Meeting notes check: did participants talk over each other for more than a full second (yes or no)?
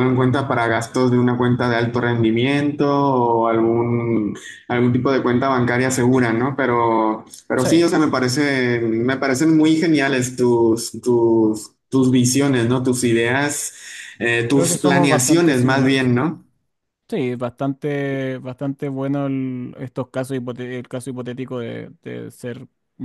yes